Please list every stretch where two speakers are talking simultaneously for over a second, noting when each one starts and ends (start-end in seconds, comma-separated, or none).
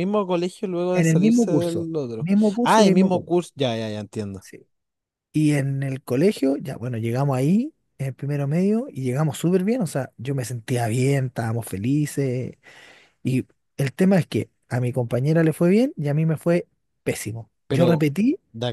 0.9-3.3